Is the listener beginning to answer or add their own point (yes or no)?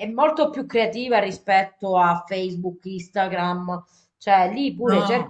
no